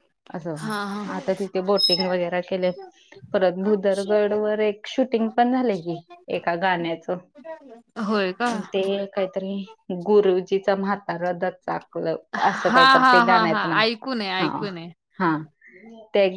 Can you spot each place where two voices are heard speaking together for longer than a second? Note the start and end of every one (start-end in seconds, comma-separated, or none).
12.3-14.6